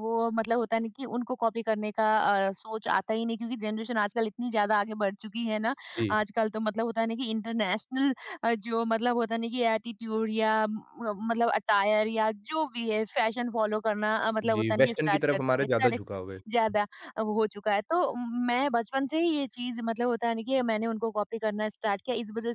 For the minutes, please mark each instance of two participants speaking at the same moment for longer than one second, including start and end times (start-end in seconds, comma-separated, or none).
14.5-16.1